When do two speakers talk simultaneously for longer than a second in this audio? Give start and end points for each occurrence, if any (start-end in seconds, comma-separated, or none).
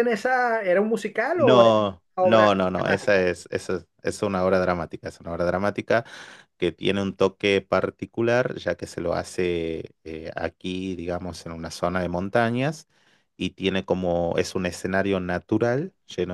1.3-3.3